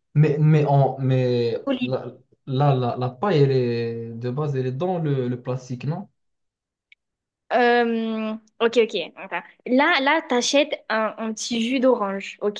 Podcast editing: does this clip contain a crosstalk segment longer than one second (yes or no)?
no